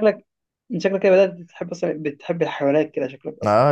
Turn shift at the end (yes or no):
yes